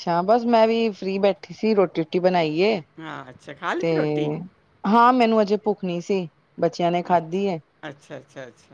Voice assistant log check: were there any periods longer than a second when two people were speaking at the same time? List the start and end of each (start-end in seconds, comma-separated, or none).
none